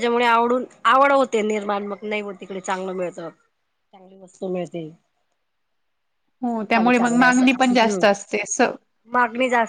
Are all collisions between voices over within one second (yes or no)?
no